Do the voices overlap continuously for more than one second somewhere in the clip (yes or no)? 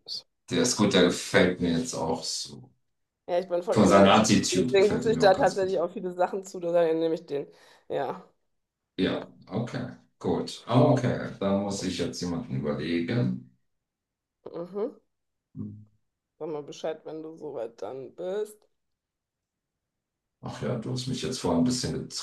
yes